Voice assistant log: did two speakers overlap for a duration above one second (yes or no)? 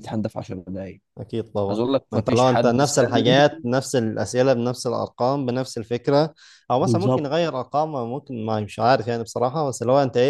yes